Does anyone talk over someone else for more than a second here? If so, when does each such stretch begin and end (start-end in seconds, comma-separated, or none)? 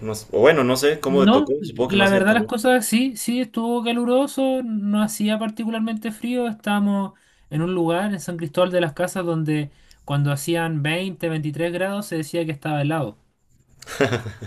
1.1-2.5